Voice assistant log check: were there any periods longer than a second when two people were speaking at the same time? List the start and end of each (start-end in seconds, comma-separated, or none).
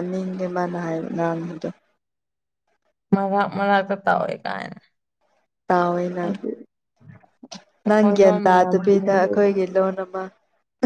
7.9-9.5